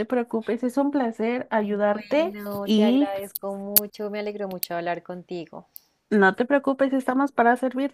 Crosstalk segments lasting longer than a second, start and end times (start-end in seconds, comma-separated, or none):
1.6-3.1